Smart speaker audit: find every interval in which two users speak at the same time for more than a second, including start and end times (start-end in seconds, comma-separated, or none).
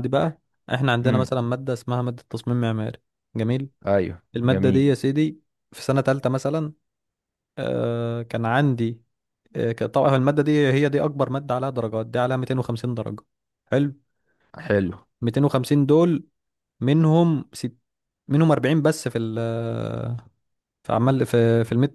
none